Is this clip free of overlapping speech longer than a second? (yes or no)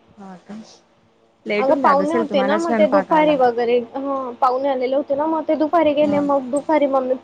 no